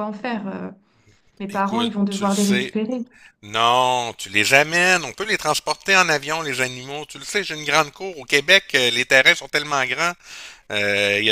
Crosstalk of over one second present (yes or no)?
yes